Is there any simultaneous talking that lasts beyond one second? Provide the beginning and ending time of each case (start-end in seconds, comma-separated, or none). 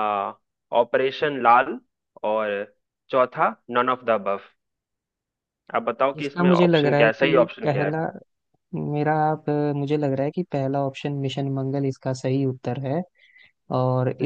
6.2-7.9